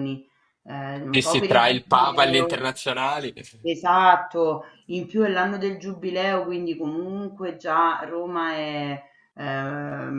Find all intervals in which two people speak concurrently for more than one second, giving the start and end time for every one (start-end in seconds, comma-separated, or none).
1.1-2.7